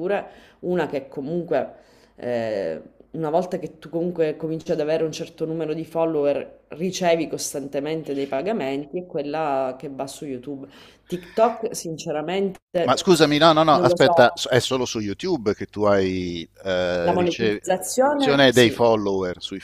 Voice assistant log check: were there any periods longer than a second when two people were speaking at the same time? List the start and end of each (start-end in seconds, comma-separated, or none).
17.0-18.9